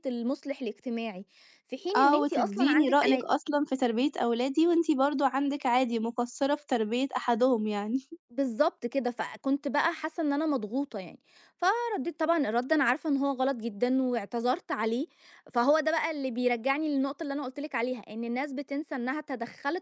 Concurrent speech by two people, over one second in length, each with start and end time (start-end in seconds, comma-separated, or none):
1.9-3.2